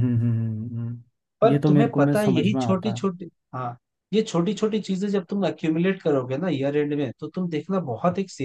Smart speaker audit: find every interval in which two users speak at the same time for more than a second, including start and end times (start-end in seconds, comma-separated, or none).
1.4-3.1